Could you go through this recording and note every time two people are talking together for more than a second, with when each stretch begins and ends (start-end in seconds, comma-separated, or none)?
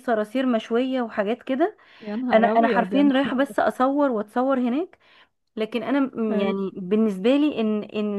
2.3-3.5